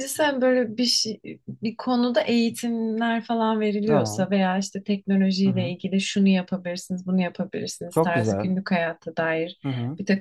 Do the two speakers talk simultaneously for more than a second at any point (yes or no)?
no